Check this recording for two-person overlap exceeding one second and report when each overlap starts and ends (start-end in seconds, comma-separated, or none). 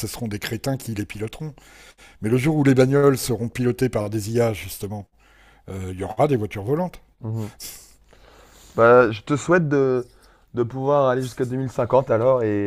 none